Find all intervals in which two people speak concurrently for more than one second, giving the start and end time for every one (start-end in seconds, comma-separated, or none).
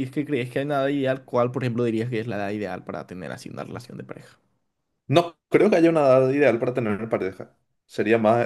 none